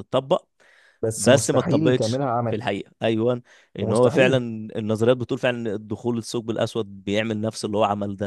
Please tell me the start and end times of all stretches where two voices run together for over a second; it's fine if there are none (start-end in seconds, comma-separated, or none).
1.2-2.4